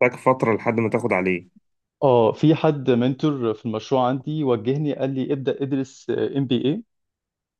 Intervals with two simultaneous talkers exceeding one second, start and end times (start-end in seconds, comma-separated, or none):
none